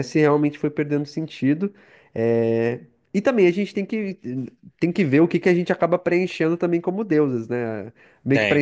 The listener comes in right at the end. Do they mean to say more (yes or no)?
no